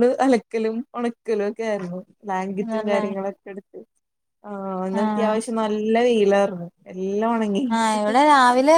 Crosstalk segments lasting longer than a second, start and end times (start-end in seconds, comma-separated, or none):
none